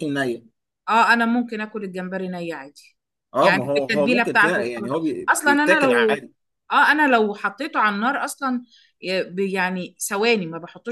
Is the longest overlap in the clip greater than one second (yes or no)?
yes